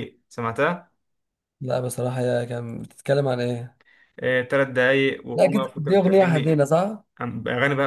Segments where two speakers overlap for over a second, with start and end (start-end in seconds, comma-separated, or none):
5.3-6.6